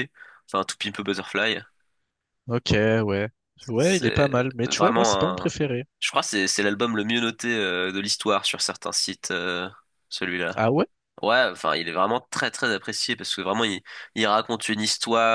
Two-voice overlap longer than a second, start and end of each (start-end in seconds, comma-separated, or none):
3.8-5.5